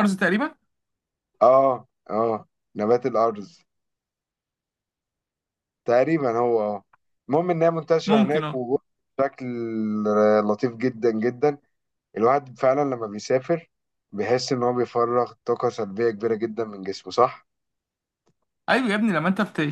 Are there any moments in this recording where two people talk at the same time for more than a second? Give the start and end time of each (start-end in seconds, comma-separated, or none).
none